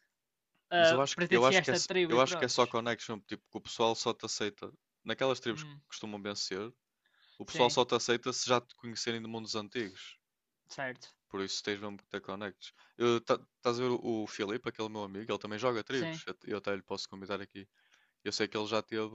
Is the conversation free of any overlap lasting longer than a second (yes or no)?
no